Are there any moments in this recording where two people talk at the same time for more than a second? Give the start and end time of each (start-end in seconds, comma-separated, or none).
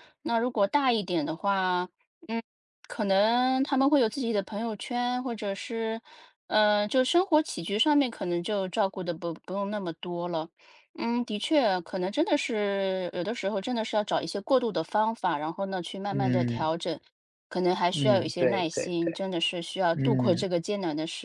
17.9-19.2